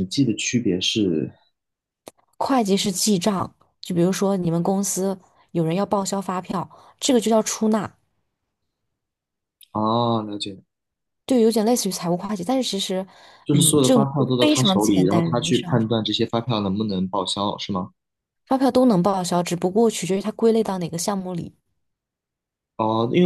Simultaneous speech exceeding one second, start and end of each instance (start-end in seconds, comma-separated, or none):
13.5-16.0